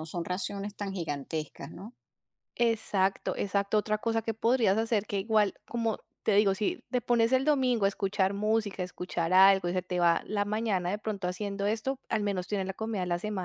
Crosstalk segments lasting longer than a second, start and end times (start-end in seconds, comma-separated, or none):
none